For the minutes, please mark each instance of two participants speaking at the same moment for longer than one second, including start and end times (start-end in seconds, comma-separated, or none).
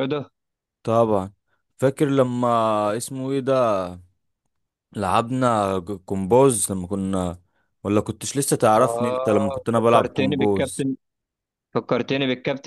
8.8-10.8